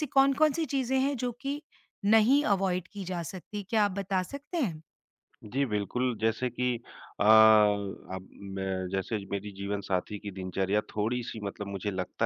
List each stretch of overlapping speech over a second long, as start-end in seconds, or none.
none